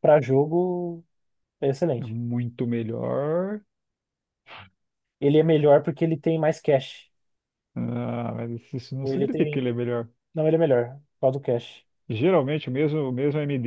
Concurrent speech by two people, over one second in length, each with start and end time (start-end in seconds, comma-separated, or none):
none